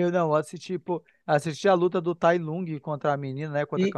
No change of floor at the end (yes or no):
no